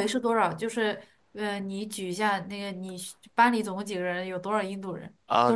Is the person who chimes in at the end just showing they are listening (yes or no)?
no